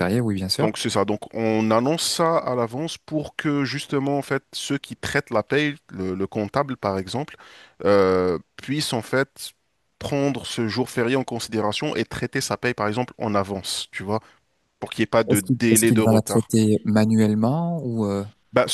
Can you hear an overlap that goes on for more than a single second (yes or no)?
yes